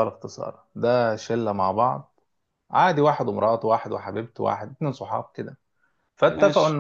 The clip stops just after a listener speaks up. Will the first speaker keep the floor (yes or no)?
yes